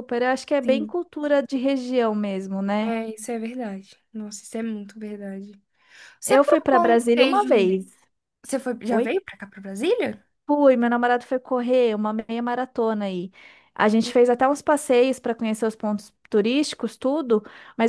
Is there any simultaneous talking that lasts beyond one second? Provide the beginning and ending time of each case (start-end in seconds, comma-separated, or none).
6.2-7.7